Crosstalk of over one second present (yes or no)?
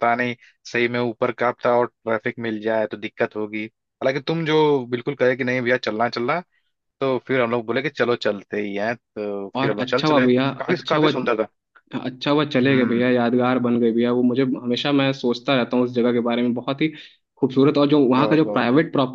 yes